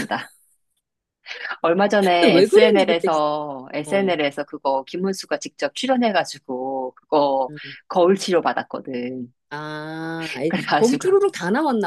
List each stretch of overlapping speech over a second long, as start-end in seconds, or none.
2.0-3.2